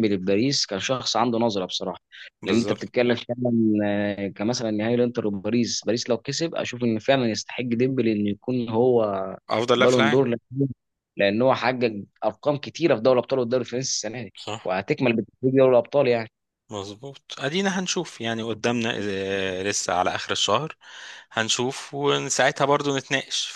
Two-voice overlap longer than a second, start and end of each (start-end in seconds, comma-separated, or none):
none